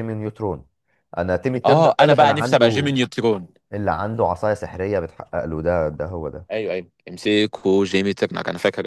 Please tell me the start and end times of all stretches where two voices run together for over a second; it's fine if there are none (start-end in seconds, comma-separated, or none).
1.6-2.9